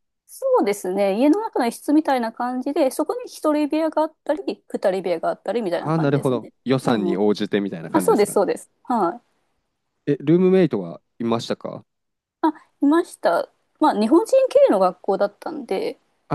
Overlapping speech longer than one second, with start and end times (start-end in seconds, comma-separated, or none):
5.7-7.2